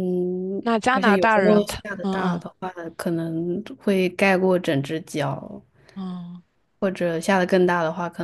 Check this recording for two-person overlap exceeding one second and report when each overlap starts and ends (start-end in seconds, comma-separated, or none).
0.6-2.4